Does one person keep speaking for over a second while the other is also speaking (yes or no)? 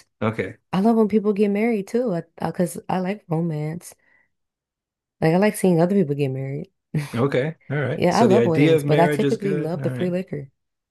yes